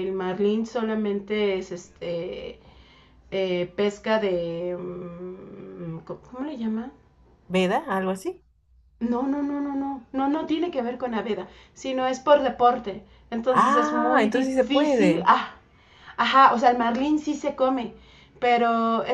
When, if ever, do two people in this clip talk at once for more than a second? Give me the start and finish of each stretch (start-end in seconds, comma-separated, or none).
13.5-15.3